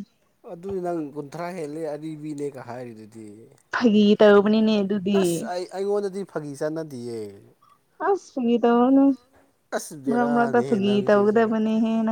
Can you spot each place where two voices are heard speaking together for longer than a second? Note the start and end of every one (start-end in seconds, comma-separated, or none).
10.1-11.5